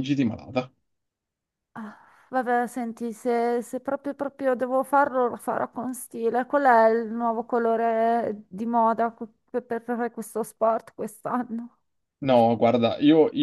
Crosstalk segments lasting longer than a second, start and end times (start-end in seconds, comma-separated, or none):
none